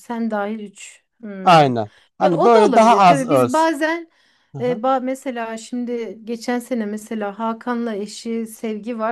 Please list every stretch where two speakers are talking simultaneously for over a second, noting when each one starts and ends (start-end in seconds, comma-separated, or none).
2.2-3.7